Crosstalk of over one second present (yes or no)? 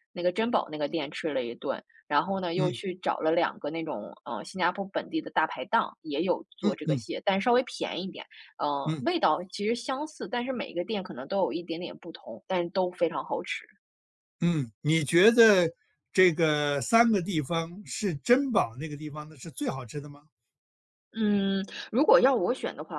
no